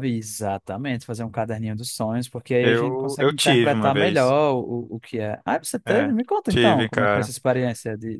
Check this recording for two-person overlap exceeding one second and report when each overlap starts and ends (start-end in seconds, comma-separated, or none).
2.6-4.3, 5.9-7.3